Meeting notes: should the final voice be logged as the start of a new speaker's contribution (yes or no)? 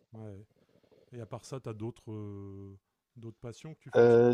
yes